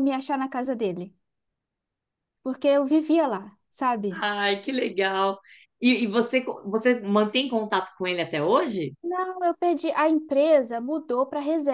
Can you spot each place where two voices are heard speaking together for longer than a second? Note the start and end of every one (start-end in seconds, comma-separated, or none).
none